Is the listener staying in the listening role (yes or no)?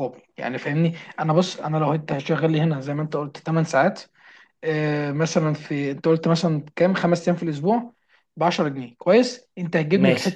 yes